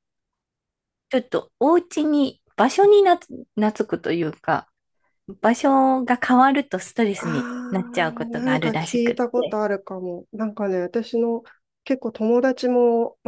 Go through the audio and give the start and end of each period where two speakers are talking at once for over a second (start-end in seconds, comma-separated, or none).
8.3-9.6